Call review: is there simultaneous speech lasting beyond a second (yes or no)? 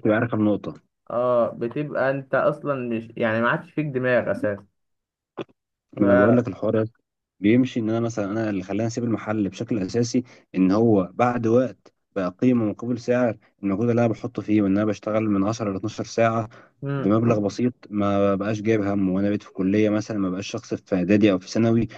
no